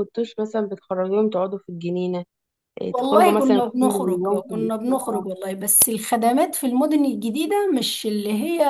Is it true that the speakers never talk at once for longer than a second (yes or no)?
no